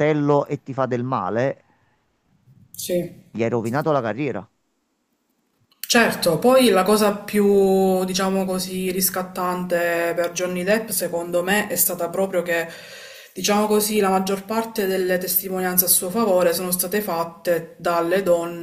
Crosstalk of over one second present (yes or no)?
no